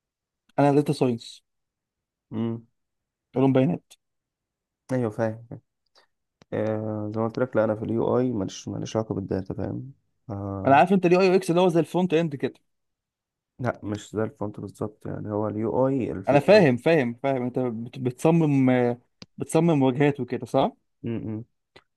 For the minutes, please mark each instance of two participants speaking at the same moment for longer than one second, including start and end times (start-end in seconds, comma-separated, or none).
none